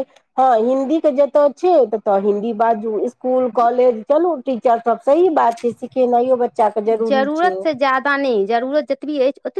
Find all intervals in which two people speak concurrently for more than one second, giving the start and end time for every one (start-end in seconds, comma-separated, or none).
none